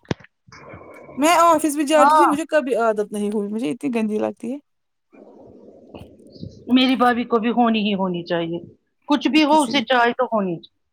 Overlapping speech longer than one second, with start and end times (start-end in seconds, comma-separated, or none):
none